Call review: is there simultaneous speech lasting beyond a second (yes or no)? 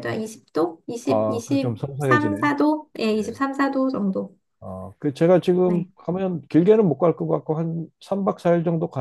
yes